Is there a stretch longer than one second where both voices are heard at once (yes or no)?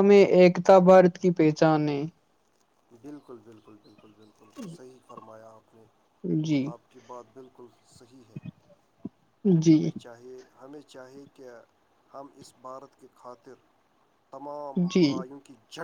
no